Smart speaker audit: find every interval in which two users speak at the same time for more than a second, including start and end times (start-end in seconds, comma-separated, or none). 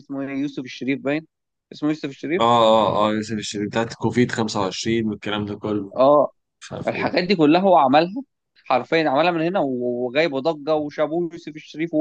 none